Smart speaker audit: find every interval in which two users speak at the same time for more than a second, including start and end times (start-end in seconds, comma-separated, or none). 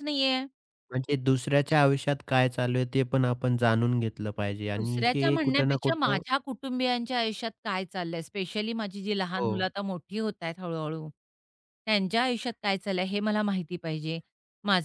4.8-6.2